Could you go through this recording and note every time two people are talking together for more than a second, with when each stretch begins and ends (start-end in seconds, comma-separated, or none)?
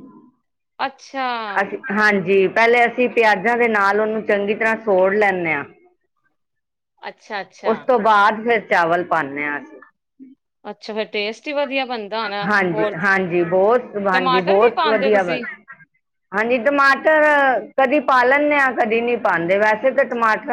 14.1-15.4